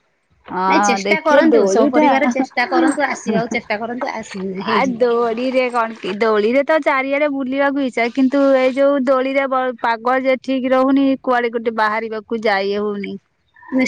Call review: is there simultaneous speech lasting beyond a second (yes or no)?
yes